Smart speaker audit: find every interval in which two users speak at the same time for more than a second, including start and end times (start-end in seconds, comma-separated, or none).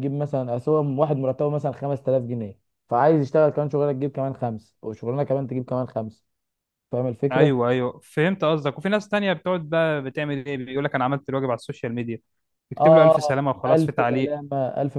12.8-14.4